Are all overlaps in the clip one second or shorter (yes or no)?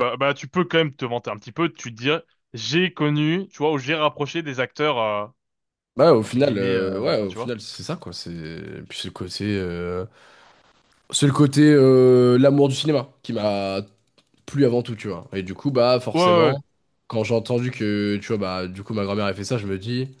no